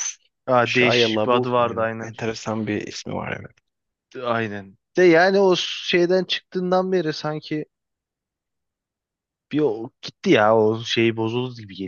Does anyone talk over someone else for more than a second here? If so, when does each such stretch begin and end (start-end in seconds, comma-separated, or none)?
0.7-2.1